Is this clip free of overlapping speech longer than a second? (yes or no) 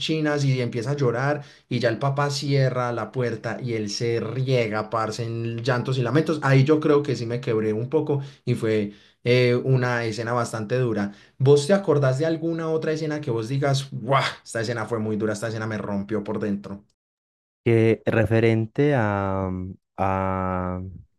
yes